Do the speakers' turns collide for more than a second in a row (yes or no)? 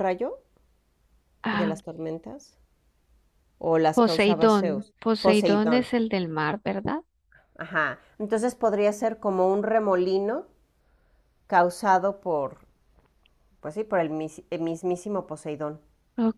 yes